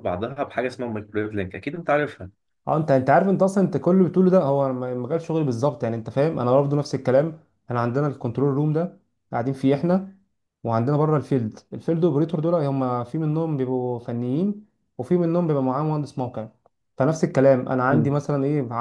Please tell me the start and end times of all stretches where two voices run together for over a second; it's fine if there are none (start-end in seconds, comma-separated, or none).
none